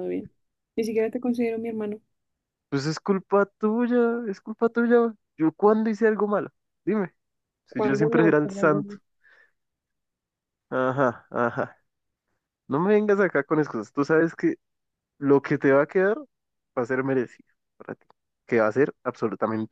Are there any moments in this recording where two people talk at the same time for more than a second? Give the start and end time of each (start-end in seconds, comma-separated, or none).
7.7-8.9